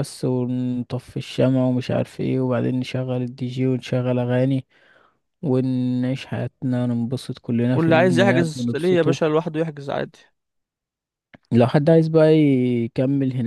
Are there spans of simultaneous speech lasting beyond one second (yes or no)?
yes